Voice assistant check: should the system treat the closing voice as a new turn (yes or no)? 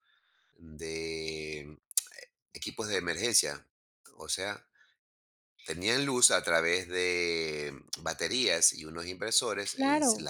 no